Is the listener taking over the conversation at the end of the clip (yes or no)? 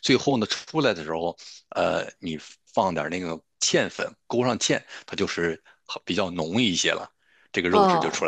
yes